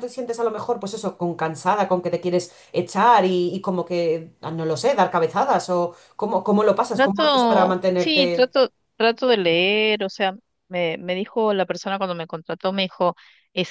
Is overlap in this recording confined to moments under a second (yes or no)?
no